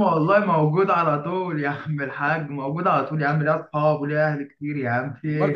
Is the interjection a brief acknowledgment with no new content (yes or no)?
no